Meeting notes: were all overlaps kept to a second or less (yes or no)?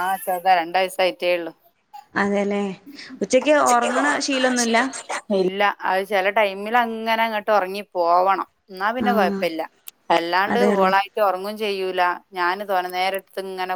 yes